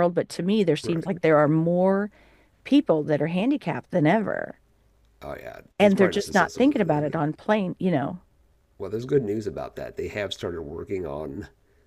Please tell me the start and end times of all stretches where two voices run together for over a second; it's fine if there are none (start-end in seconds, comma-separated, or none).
5.8-7.2